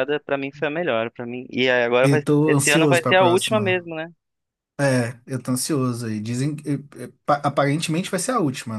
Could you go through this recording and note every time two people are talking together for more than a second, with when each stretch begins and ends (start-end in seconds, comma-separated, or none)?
2.0-3.8